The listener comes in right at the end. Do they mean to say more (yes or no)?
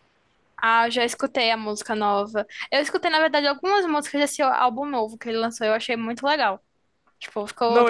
no